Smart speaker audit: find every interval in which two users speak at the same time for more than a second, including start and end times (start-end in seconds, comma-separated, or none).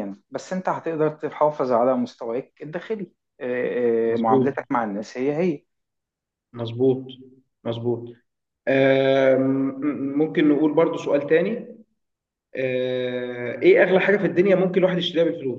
none